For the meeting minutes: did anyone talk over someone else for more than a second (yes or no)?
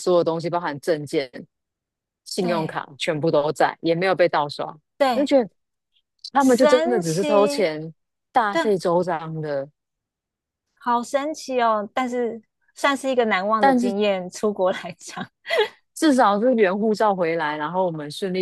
yes